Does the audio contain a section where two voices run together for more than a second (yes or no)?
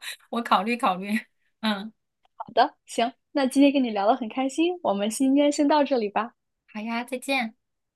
no